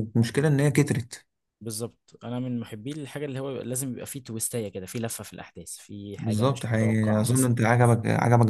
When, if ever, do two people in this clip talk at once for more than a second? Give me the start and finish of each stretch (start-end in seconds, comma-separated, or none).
6.2-7.5